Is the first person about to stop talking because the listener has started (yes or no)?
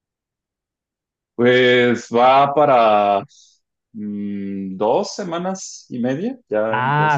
yes